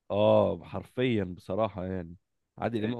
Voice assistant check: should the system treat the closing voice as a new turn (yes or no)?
no